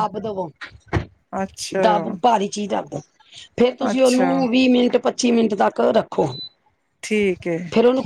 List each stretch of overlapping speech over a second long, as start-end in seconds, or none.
none